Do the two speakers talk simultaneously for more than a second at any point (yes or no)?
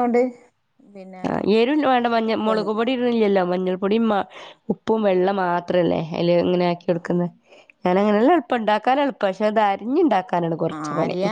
no